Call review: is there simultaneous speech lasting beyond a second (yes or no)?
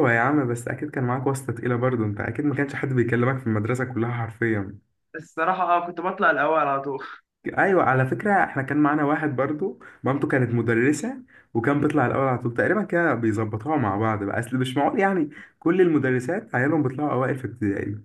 no